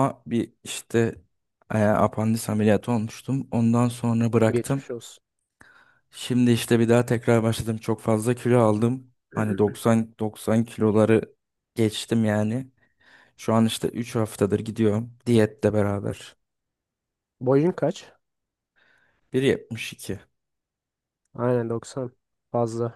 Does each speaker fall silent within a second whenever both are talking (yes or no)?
yes